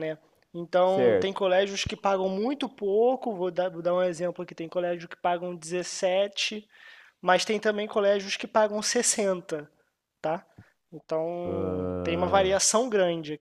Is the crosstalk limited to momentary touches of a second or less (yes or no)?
no